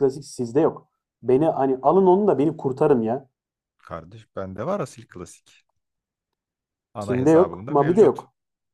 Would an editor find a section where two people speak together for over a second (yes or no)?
yes